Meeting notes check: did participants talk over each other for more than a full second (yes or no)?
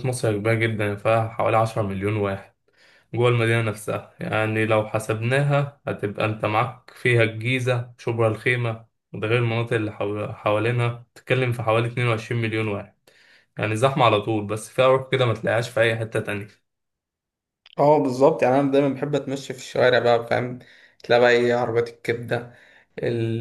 no